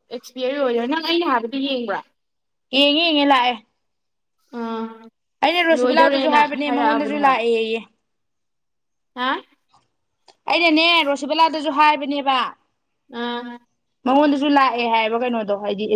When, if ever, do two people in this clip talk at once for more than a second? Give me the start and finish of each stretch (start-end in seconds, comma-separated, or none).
5.8-7.4